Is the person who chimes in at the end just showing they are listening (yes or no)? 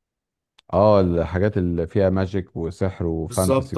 no